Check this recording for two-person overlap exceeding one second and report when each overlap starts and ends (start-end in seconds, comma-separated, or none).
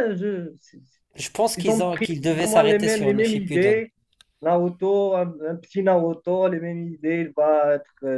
1.6-3.8